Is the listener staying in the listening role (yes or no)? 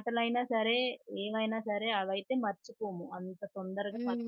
no